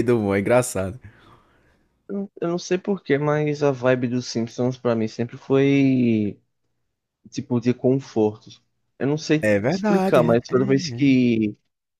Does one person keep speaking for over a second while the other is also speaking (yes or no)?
yes